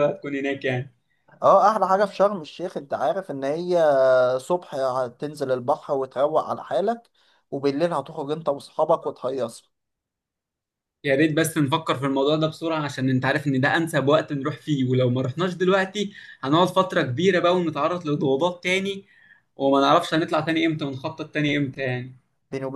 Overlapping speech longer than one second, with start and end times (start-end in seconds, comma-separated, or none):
none